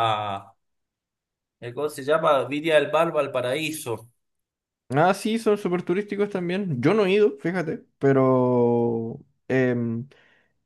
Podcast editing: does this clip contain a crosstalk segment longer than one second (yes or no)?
no